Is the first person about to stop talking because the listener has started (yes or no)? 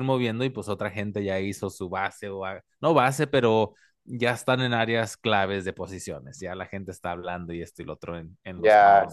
yes